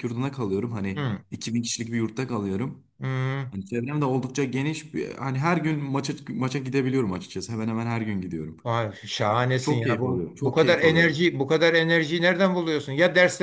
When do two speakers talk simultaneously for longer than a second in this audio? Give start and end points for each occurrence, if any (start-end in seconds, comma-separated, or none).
9.6-11.2